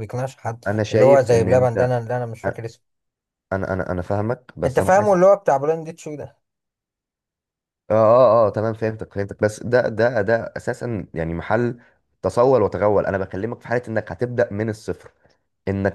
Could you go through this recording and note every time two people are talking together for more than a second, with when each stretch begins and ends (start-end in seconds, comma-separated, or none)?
0.7-2.0